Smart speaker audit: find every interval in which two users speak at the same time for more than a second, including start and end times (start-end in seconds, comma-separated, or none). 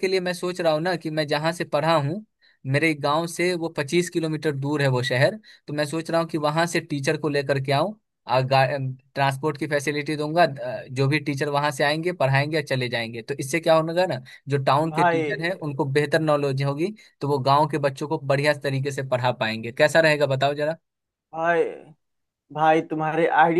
none